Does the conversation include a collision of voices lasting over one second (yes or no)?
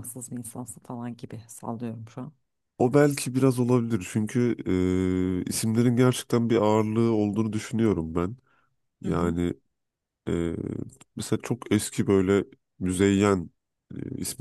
no